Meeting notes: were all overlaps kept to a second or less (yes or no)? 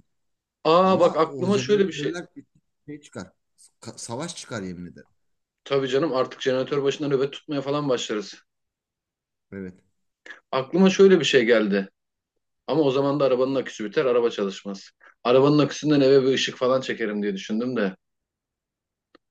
no